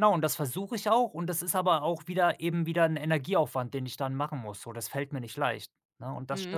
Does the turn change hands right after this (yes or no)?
yes